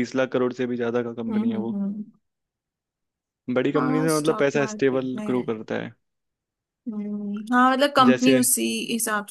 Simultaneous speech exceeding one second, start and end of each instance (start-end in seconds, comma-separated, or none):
3.8-5.5